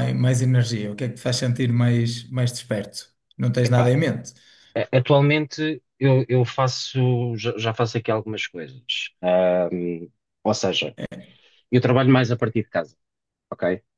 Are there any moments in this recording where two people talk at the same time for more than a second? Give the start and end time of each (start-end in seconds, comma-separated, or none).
none